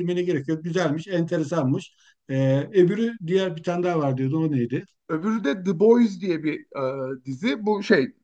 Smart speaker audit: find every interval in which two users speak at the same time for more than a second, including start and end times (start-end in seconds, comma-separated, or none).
none